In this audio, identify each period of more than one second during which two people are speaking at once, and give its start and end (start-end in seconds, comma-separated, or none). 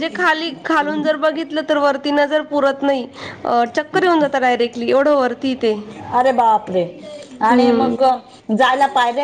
none